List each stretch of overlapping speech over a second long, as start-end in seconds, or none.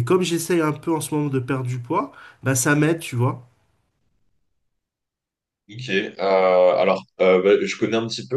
none